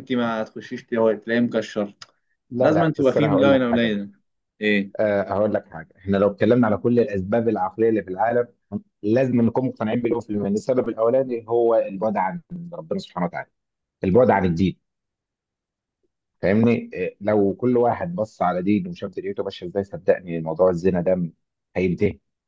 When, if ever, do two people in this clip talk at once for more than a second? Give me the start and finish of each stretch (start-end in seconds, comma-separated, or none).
2.6-4.0